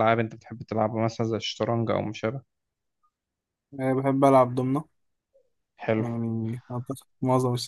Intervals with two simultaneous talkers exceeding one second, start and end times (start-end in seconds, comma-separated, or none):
none